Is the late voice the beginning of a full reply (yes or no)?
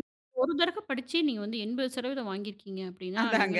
no